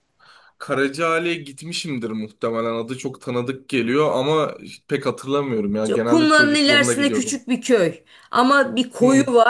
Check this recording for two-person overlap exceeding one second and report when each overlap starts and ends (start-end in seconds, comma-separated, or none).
5.9-7.4